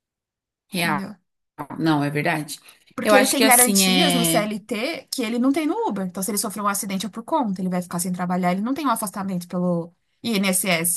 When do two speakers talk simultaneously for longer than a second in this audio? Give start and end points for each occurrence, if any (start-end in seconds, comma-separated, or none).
3.0-4.5